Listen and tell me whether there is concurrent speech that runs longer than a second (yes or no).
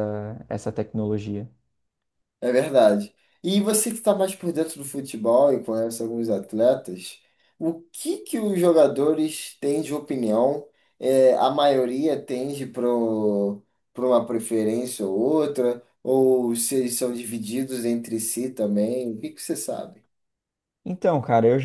no